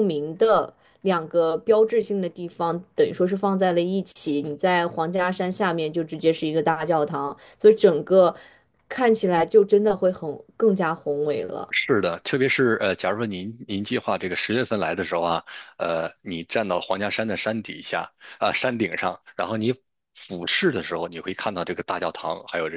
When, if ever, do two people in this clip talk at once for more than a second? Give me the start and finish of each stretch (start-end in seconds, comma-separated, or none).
none